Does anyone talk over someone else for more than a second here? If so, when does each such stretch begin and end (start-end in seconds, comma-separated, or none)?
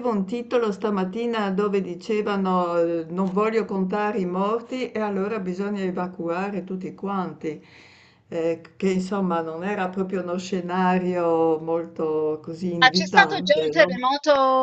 12.8-14.0